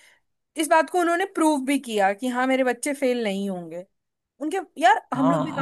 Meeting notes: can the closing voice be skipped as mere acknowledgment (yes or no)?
yes